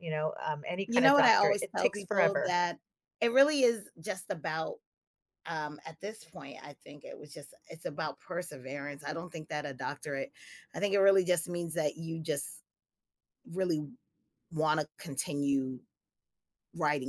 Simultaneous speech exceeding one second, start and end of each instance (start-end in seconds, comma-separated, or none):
0.9-2.6